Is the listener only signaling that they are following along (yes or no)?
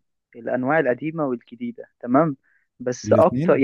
yes